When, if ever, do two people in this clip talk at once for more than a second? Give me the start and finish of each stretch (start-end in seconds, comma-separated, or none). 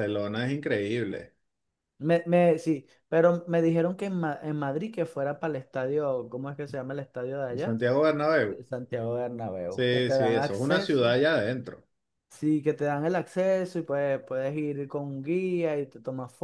9.7-11.2